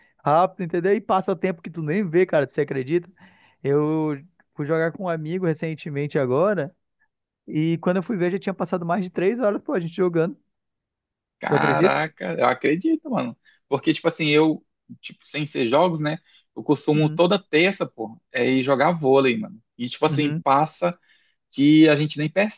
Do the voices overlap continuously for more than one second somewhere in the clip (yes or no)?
no